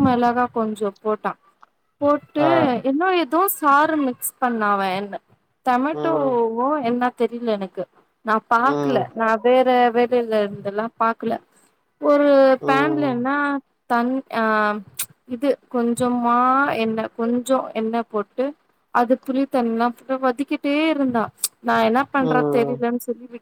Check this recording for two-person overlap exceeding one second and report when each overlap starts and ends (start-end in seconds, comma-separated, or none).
none